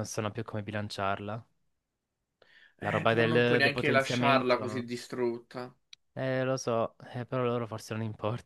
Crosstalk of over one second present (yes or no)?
yes